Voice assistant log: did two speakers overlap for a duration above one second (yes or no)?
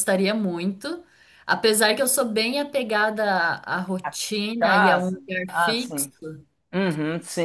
yes